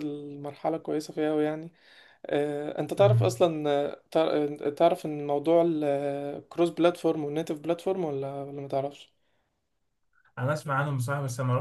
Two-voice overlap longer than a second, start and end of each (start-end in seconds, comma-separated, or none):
none